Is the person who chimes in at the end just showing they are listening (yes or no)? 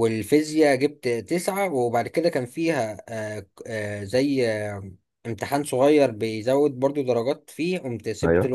yes